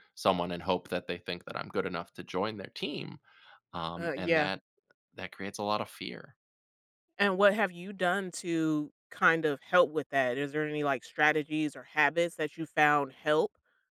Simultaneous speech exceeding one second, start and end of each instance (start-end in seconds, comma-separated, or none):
none